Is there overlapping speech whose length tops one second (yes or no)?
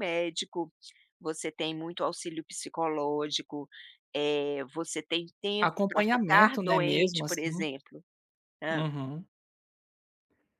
yes